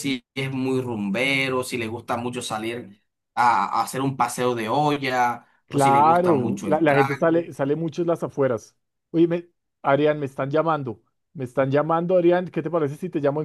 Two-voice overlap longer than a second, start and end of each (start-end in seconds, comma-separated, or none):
5.7-7.4